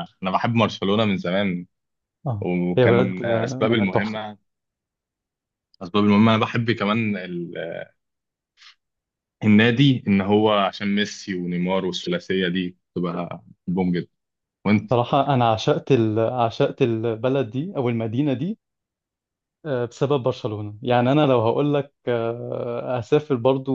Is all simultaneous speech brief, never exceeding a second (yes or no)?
no